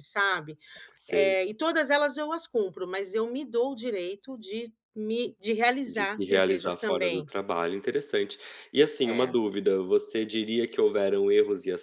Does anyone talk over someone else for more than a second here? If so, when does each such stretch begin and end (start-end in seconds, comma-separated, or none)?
5.9-7.3